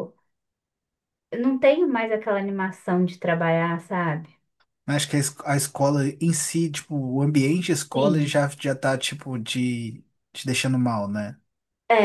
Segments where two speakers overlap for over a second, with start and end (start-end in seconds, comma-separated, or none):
none